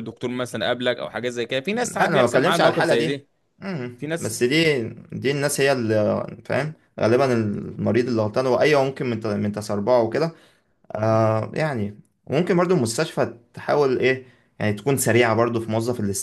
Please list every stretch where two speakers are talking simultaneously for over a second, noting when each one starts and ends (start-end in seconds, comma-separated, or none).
1.7-3.2